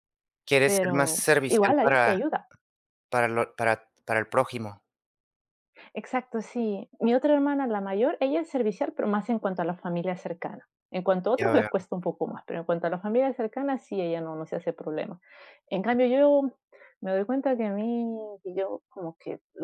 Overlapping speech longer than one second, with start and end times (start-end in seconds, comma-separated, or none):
0.6-2.2